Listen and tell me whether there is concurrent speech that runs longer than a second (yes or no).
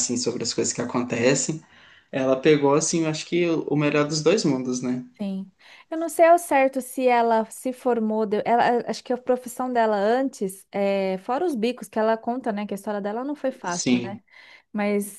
no